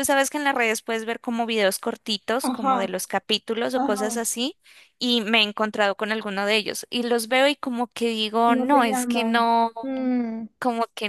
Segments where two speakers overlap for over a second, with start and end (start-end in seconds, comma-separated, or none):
8.5-9.7